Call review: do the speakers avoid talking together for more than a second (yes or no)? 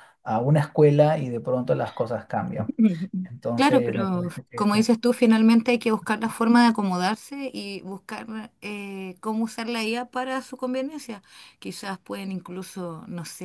no